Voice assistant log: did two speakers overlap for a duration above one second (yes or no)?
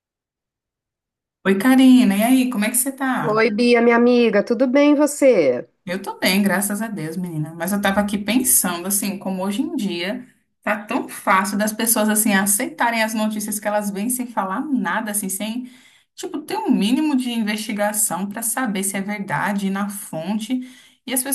no